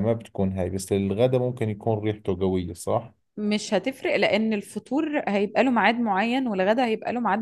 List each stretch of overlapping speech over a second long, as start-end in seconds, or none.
none